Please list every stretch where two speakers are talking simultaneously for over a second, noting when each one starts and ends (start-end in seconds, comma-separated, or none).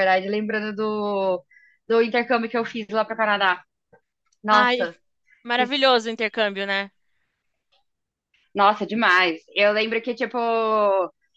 none